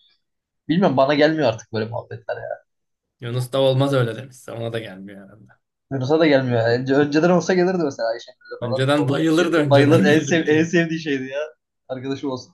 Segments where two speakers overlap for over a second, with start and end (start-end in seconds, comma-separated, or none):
8.6-10.7